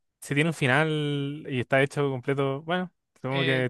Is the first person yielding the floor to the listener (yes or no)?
yes